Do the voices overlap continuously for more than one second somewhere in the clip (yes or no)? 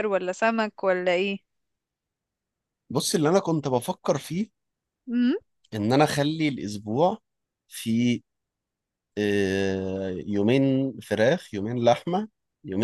no